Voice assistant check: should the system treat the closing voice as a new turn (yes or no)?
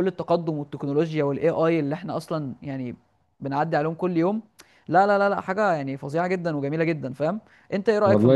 yes